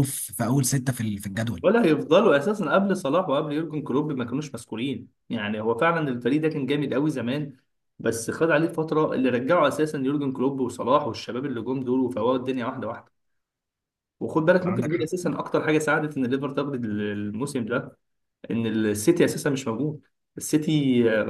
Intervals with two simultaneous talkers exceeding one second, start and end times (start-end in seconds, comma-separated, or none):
none